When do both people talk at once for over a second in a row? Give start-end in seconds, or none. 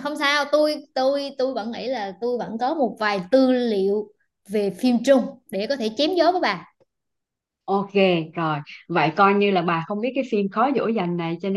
none